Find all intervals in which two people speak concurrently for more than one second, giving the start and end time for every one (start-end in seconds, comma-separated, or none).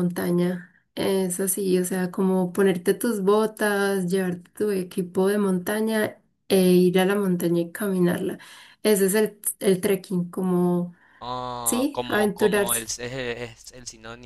11.6-12.9